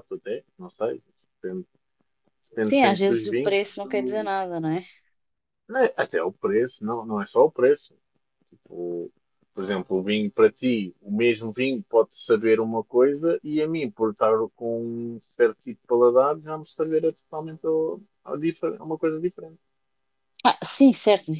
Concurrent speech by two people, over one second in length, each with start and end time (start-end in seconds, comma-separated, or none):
2.7-4.3